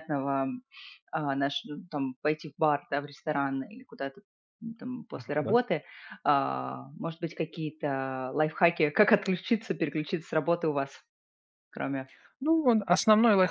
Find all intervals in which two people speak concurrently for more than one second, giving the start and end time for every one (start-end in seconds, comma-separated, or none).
none